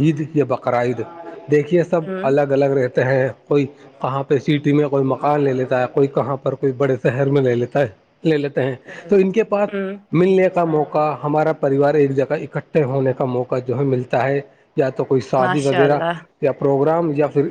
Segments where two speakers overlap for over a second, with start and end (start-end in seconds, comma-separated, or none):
none